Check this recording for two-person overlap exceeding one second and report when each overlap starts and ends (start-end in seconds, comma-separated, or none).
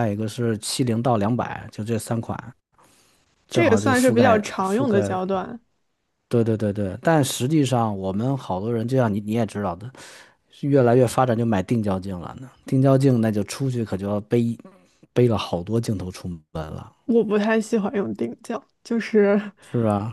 3.5-5.2